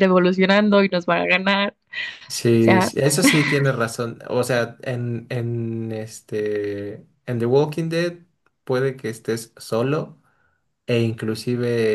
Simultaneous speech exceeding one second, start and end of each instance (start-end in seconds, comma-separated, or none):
none